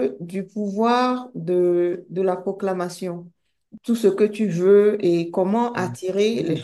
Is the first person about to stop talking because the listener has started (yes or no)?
no